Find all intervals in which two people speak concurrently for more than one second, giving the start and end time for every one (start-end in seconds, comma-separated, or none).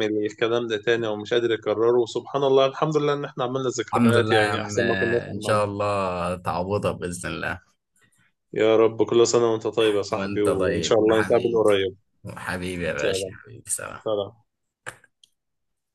3.9-5.7, 10.2-11.6